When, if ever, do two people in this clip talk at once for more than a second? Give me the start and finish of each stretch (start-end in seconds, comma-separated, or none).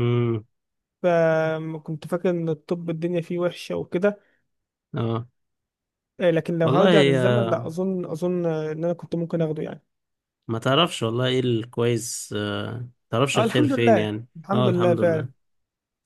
13.3-15.3